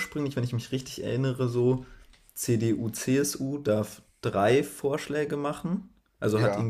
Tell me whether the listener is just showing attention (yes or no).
yes